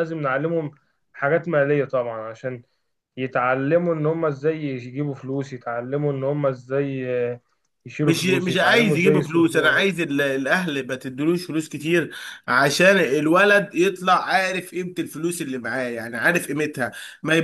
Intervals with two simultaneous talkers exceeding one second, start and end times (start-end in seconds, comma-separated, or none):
8.0-9.8